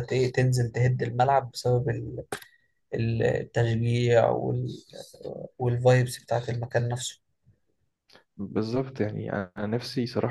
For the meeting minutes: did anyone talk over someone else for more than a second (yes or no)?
no